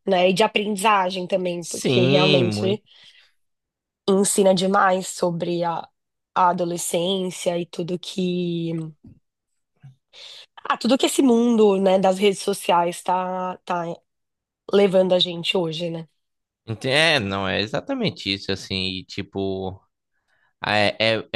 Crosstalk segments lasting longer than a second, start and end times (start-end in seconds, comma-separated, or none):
1.6-2.8